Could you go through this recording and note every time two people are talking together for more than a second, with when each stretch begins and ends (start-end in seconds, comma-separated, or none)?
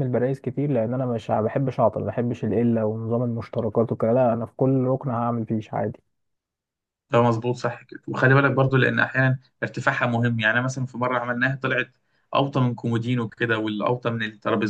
none